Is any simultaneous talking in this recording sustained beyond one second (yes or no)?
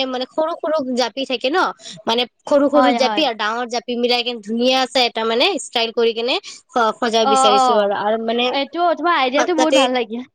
no